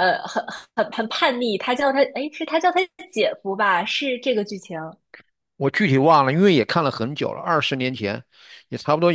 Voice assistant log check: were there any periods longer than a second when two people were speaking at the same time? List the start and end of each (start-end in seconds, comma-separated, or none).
none